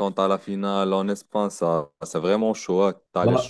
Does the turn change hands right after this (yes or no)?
yes